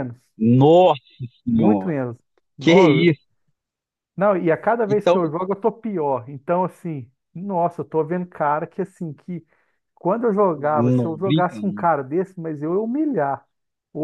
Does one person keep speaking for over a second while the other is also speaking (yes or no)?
yes